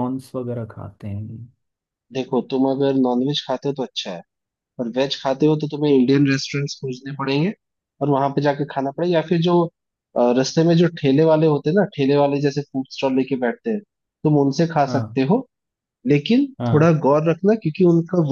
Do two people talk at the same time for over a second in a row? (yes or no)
no